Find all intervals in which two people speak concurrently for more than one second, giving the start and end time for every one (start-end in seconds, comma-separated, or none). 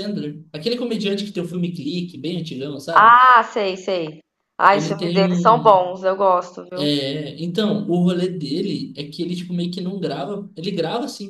4.7-5.9